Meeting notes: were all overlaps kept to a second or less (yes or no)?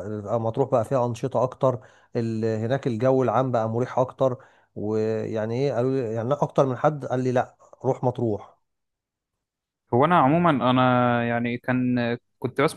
yes